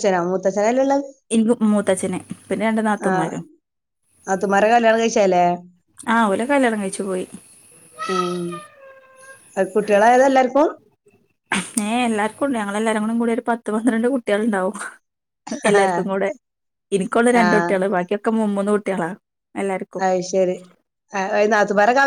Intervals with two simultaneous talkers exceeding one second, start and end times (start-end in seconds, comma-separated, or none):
none